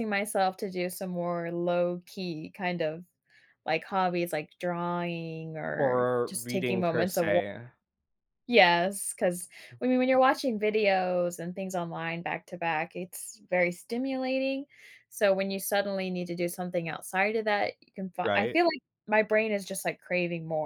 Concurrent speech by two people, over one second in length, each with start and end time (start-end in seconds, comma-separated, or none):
5.8-7.3